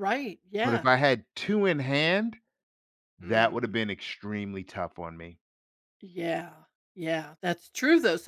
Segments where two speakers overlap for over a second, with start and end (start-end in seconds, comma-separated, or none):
none